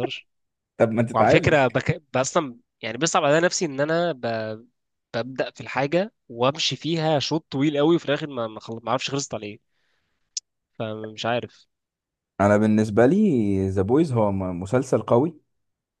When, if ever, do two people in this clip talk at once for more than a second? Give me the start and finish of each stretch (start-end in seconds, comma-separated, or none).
none